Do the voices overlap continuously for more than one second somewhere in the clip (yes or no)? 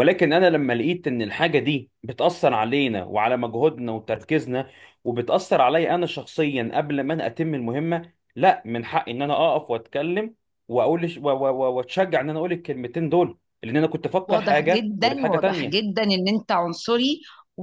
yes